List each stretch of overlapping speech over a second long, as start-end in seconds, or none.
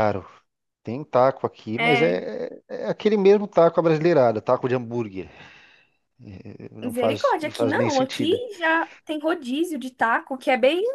6.8-8.4